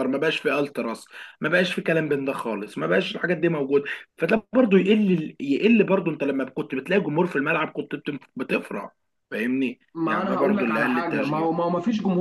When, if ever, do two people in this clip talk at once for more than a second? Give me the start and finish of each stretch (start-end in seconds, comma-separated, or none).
9.9-11.5